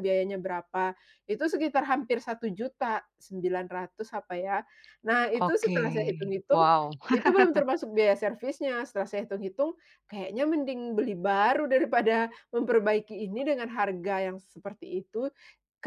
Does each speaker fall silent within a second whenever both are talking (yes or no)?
no